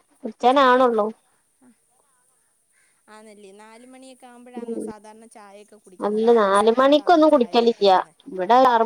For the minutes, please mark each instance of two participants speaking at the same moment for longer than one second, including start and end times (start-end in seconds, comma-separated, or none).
6.1-7.9